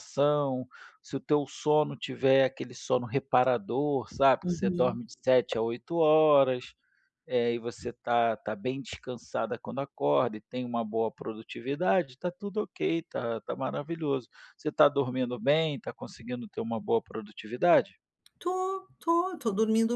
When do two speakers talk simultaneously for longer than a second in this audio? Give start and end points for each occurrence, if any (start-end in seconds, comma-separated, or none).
none